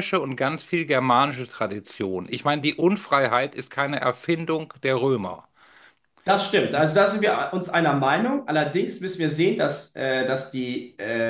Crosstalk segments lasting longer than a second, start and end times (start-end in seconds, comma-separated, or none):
none